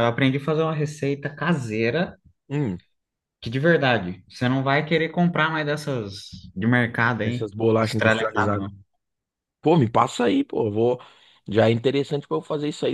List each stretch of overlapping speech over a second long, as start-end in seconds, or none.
7.2-8.7